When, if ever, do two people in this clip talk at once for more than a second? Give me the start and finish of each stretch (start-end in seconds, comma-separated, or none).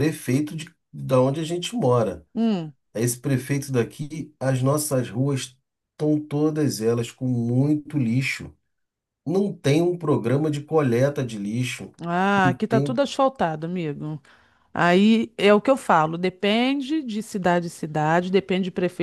none